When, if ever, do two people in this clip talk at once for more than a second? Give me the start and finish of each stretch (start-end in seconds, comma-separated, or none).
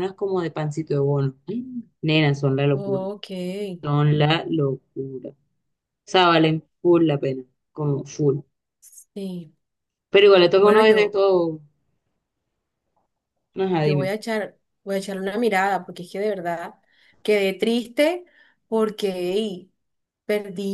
none